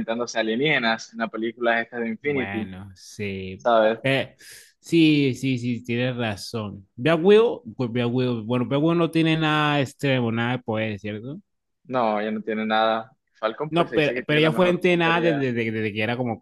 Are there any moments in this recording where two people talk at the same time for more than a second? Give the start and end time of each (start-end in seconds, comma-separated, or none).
13.7-15.5